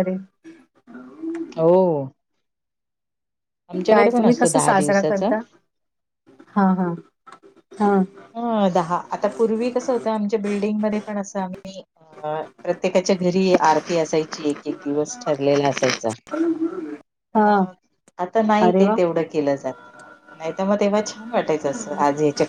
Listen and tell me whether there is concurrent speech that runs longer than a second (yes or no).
yes